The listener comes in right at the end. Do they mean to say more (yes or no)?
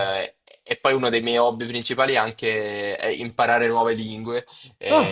no